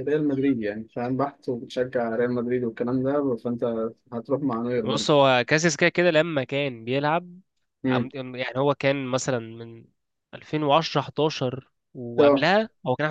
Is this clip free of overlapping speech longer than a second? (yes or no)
yes